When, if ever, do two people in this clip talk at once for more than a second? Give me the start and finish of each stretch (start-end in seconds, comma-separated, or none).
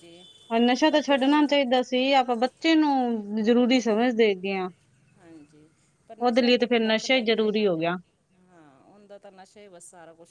6.2-7.7